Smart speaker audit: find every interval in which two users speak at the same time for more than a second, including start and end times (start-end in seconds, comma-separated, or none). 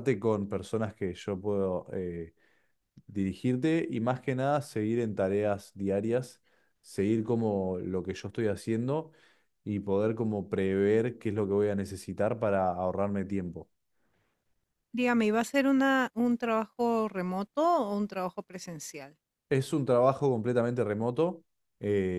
none